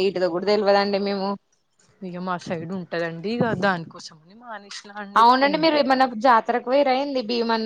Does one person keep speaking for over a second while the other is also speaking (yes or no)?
no